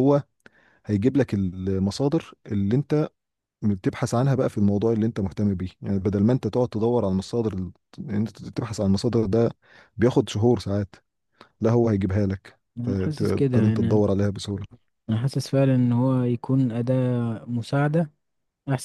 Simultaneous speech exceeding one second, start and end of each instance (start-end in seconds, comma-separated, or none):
12.8-14.0